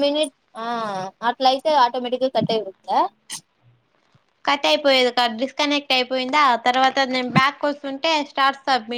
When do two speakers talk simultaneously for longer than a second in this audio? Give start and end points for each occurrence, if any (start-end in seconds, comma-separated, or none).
none